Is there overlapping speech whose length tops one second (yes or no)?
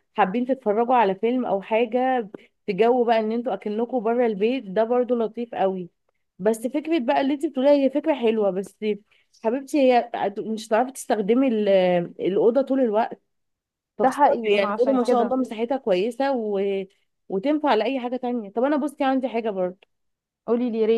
yes